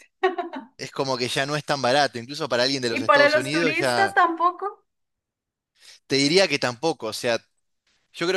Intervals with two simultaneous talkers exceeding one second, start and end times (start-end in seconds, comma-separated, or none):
2.9-4.2